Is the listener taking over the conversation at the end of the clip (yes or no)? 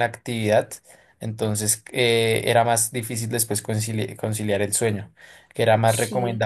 no